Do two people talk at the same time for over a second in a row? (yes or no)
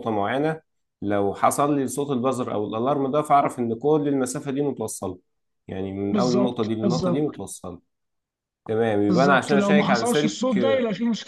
yes